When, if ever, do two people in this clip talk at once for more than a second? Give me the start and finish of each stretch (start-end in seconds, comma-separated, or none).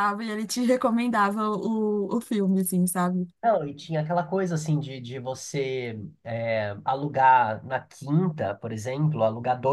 none